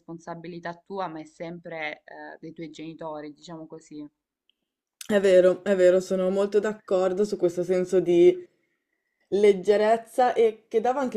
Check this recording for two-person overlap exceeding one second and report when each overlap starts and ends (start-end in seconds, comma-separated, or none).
none